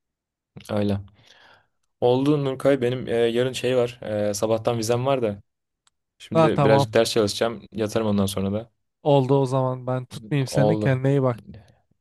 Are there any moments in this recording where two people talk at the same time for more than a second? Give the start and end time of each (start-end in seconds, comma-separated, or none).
none